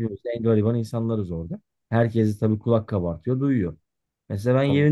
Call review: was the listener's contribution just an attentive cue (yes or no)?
yes